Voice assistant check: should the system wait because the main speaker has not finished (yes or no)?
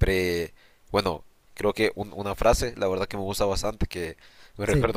yes